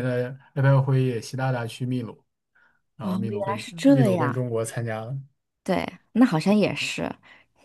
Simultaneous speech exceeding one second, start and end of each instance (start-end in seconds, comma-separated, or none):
3.0-4.5